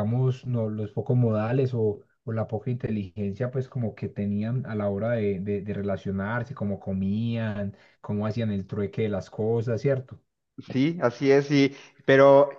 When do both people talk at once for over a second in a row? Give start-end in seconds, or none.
none